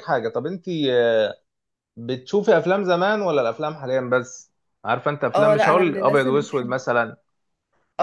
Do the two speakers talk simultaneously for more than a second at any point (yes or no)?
yes